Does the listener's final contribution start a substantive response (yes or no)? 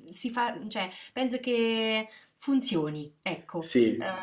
no